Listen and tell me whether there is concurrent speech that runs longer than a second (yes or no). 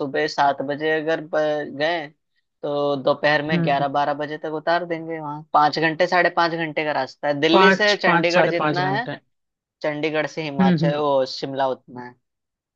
yes